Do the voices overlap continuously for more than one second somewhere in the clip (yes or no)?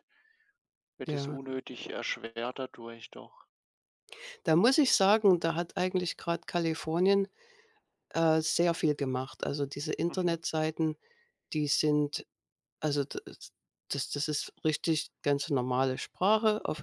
no